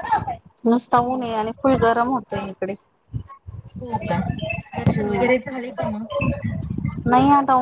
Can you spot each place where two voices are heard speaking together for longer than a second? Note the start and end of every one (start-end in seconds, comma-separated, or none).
none